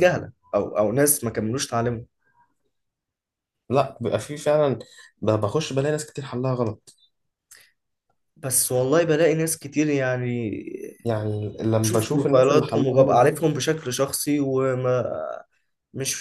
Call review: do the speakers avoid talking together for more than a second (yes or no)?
no